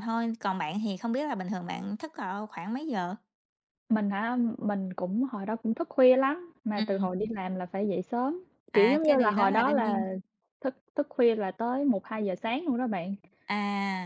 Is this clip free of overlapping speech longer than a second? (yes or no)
no